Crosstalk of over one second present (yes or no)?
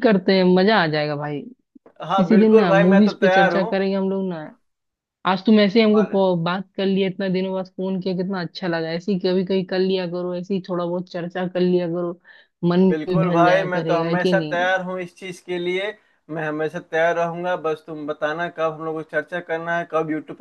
yes